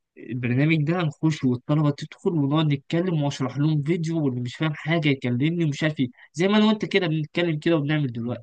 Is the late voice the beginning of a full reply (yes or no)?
yes